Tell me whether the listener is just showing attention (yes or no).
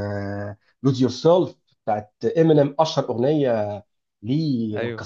yes